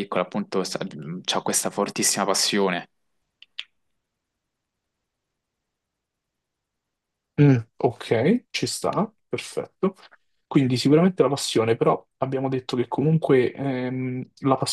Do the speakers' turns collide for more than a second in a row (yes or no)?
no